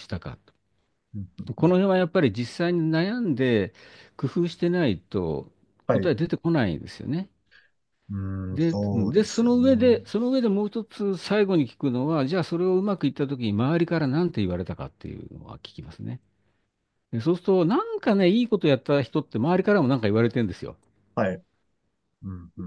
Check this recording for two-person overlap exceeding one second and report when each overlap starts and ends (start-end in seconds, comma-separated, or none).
8.6-10.0